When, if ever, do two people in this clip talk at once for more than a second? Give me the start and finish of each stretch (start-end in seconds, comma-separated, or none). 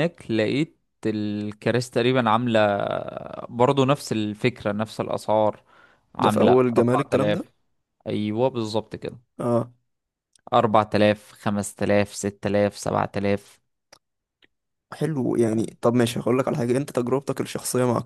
6.2-7.5